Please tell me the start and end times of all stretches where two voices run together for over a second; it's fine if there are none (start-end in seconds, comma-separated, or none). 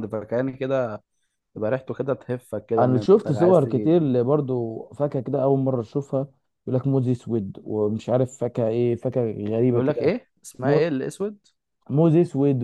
2.8-4.1